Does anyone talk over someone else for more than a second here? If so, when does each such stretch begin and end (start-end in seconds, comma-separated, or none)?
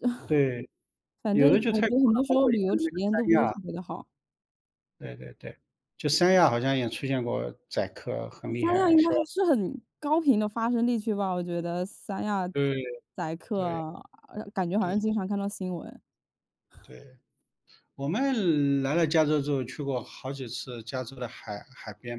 1.3-3.6